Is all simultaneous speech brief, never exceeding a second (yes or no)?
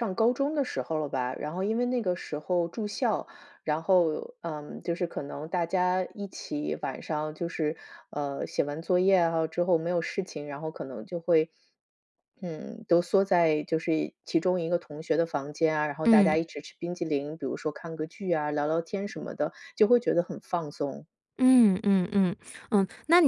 yes